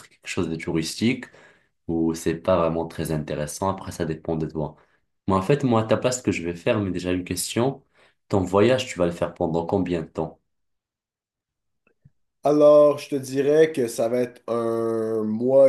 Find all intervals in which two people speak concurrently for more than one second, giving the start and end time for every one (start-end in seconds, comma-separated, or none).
none